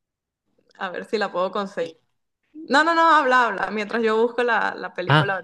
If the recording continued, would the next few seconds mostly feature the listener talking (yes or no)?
yes